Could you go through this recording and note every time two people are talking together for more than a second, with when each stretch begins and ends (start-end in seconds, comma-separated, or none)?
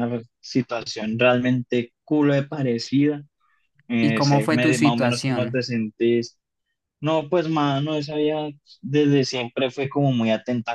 4.0-5.7